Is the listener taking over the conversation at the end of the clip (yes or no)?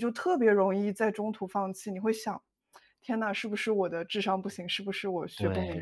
yes